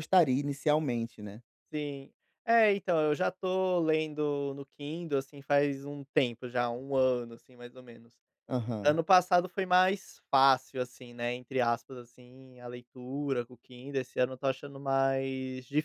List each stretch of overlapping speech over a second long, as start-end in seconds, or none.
none